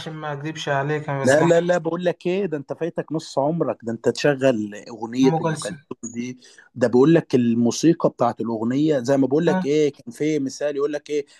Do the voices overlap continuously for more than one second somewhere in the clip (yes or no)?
no